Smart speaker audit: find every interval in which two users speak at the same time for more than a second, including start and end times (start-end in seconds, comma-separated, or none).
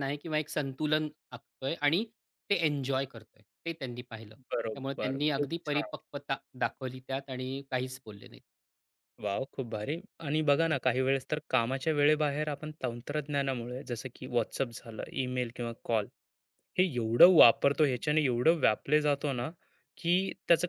4.5-5.9